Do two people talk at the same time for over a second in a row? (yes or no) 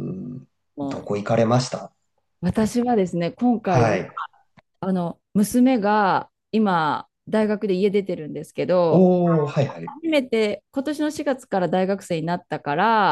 no